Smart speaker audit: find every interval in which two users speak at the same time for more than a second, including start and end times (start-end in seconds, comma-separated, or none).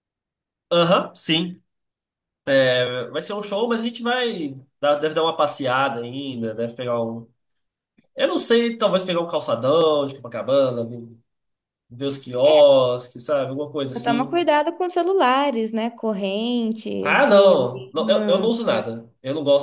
17.0-18.8